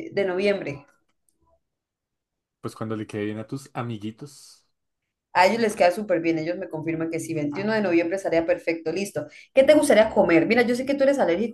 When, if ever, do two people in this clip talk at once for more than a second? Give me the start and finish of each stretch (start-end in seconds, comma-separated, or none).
none